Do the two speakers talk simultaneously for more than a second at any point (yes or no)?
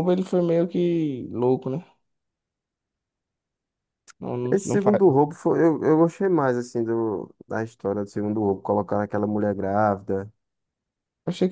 no